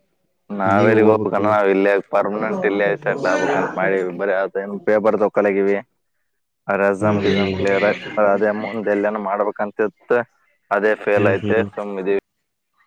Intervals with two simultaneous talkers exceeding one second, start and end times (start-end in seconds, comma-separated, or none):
2.4-4.0